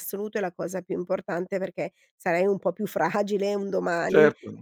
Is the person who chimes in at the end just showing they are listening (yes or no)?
no